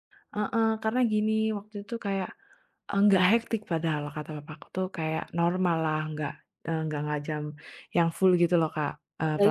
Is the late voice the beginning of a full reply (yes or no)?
yes